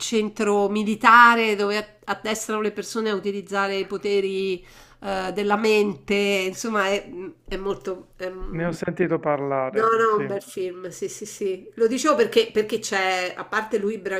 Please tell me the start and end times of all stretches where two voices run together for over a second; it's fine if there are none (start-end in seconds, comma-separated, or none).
none